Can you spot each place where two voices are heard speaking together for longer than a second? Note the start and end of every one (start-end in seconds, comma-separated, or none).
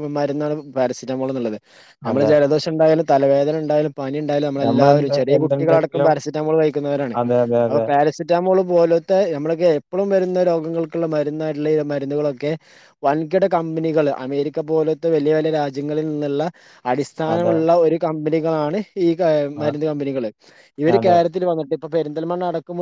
4.6-6.1